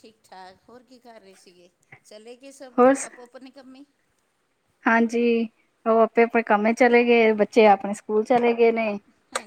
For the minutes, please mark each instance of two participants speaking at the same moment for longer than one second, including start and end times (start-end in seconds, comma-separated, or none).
none